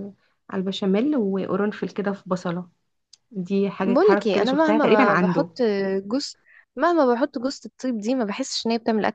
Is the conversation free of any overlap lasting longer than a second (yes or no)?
no